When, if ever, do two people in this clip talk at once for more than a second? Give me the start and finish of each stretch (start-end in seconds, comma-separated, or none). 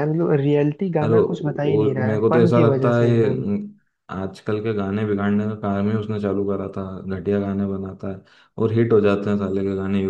1.0-3.4